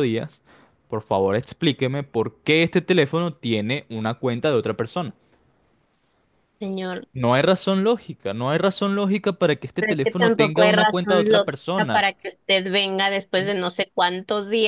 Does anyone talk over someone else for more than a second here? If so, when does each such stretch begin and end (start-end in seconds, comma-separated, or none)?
9.8-12.1